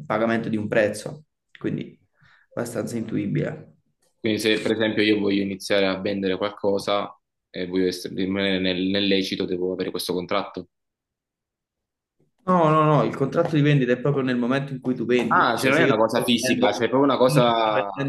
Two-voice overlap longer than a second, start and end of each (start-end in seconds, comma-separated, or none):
15.3-16.9